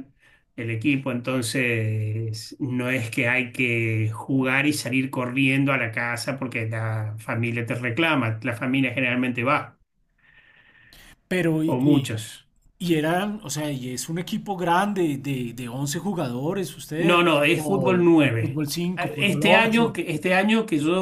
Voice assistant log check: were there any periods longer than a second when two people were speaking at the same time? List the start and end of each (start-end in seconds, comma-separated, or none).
17.0-19.9